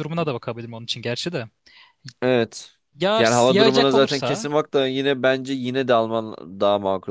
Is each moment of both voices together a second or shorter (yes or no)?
no